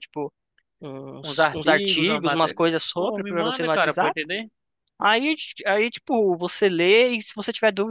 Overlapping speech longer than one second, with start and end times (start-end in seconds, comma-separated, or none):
1.2-4.2